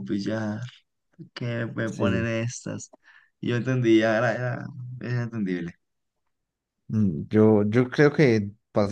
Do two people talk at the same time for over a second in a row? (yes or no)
no